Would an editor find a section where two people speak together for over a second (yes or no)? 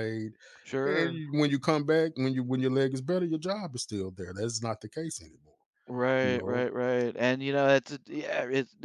no